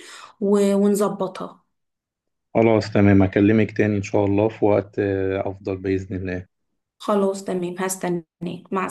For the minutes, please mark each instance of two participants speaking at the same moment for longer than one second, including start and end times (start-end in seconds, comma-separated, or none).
none